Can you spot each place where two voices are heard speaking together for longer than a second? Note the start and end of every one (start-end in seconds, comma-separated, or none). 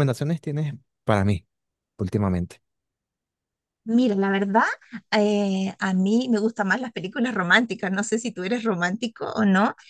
none